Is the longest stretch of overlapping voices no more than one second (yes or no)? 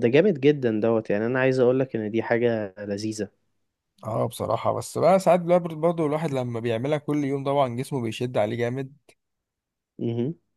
yes